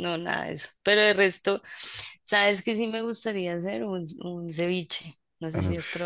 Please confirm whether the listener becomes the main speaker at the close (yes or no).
yes